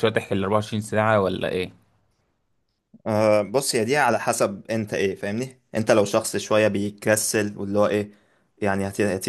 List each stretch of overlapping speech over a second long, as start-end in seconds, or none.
none